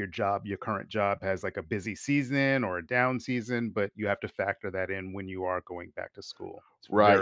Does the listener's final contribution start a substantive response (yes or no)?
yes